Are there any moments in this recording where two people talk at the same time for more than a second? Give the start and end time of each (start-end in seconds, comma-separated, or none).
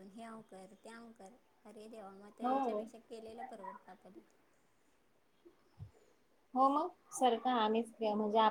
none